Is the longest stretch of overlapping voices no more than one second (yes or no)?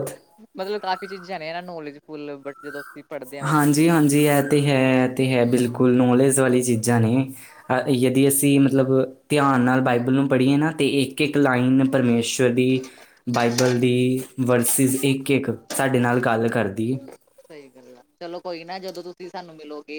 yes